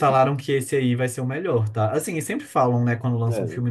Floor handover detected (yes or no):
no